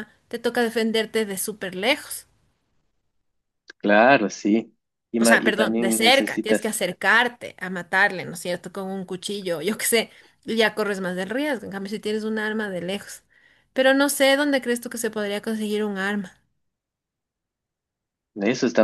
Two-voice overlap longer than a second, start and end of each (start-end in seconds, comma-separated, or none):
5.2-6.7